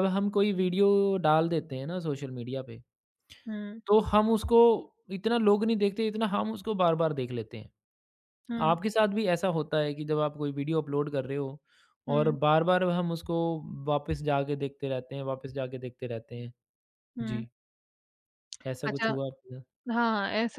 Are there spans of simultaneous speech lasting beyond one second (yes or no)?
no